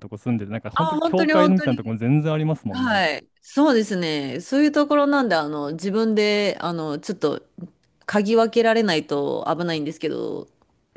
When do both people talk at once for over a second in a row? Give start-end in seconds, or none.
0.7-1.9